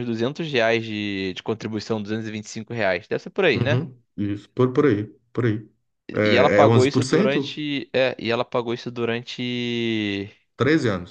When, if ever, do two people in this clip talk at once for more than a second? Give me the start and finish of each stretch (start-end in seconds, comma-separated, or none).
6.2-7.6